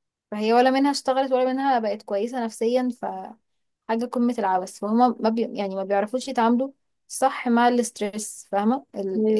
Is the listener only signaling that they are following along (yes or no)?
yes